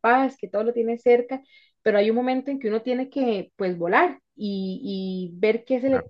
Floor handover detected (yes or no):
no